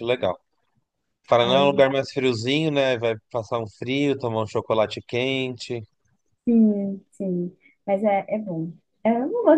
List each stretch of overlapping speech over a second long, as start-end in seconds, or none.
none